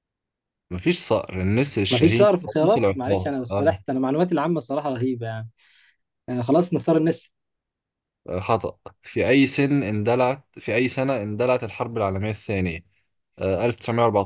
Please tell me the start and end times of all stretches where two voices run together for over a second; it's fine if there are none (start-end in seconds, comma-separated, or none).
1.9-3.7